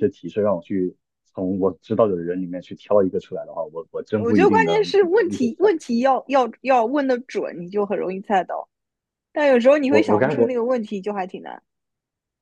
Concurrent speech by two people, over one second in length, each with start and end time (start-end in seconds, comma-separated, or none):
4.2-5.7